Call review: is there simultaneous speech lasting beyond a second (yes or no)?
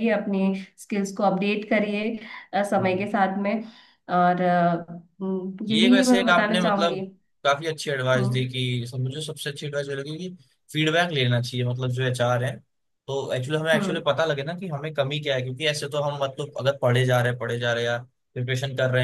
yes